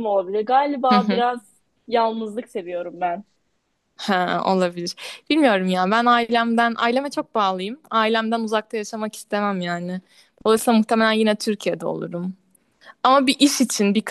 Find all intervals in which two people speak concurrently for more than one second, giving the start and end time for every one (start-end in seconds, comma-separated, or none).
none